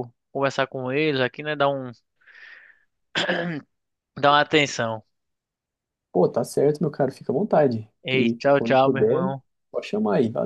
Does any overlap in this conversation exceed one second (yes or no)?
yes